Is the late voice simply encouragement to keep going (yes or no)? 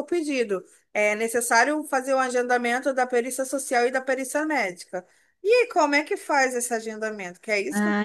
no